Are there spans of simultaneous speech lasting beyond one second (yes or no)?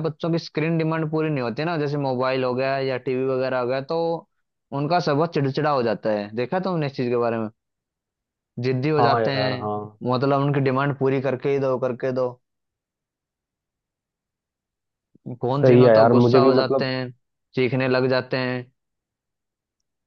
yes